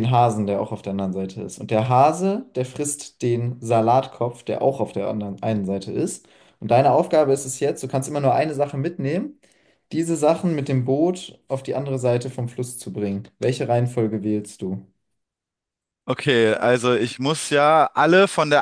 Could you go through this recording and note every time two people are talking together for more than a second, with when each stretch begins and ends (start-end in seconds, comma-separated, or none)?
none